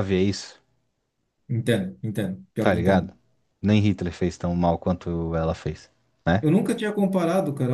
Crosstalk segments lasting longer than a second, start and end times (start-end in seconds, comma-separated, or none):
none